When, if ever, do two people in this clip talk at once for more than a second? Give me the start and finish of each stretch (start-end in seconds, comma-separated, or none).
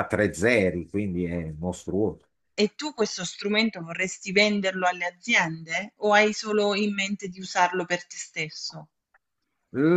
none